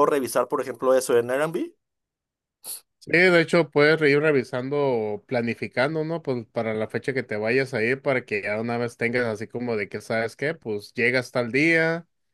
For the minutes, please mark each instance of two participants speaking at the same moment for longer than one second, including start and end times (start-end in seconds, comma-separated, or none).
none